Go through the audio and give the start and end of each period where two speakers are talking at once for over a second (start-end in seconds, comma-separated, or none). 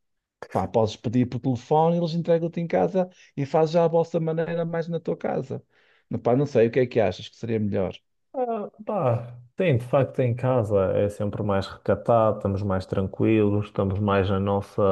none